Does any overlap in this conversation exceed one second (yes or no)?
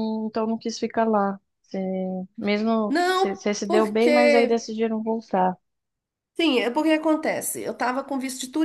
yes